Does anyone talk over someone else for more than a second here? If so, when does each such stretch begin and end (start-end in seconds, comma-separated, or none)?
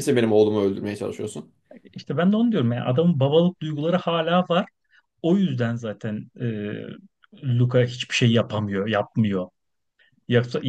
none